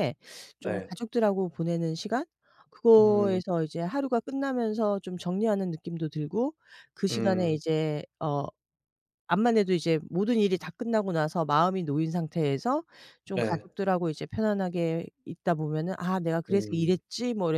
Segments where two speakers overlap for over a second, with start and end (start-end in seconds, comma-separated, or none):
none